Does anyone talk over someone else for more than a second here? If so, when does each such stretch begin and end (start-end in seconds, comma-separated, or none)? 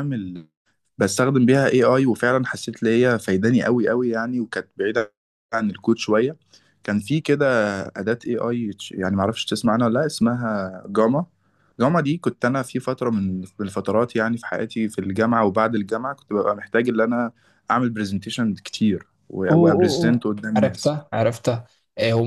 19.5-20.9